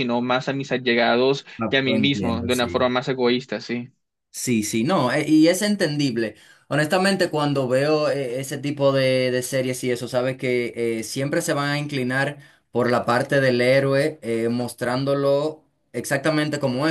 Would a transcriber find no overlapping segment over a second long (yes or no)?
no